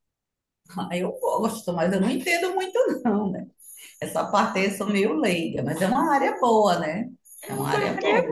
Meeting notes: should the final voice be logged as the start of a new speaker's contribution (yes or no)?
yes